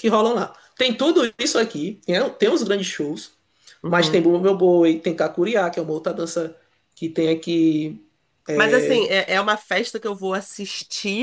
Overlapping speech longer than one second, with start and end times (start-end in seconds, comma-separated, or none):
none